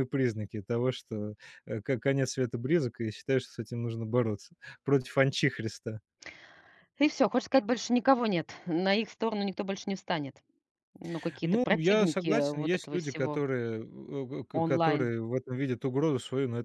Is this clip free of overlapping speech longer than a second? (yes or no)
no